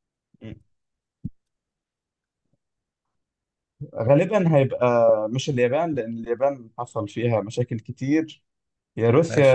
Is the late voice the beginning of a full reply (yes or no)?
no